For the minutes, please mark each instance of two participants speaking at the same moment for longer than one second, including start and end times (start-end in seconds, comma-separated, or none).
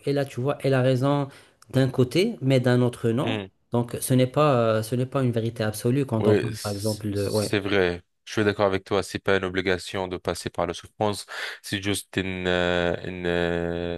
6.2-7.5